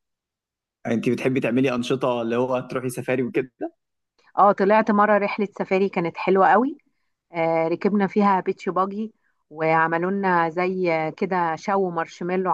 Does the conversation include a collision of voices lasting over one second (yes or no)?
no